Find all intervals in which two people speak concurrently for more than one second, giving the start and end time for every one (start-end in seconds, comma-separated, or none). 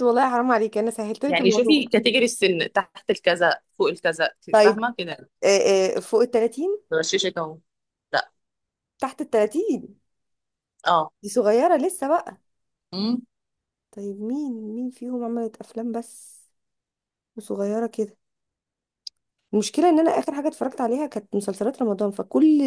none